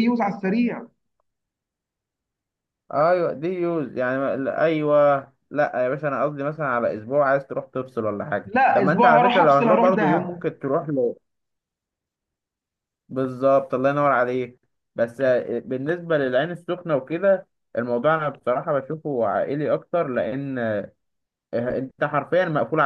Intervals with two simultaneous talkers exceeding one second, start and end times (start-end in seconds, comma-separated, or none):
8.4-10.4